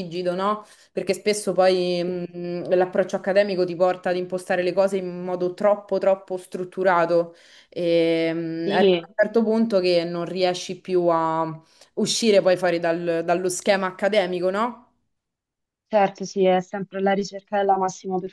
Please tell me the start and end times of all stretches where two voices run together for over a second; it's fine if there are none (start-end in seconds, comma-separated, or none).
none